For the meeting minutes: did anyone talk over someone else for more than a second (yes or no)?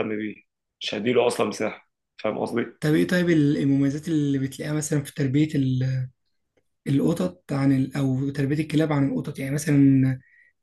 no